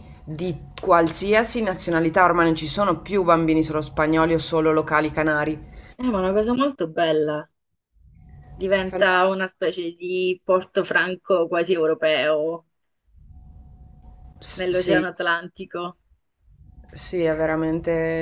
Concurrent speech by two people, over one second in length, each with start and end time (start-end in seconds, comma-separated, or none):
none